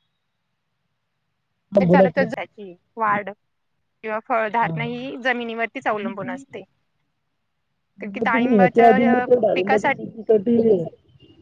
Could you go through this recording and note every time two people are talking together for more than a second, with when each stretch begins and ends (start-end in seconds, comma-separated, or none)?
8.1-10.1